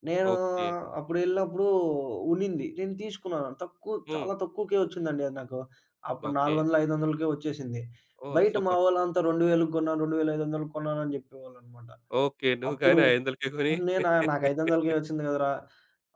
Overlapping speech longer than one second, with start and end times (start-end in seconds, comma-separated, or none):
none